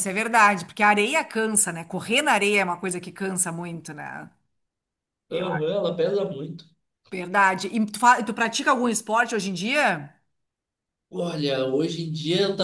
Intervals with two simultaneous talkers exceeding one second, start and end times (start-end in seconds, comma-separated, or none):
none